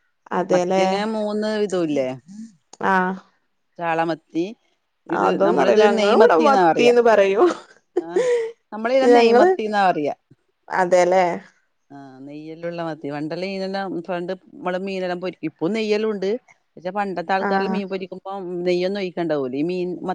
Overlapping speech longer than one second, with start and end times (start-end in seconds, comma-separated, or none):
none